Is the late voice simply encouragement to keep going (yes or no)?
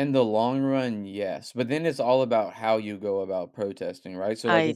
yes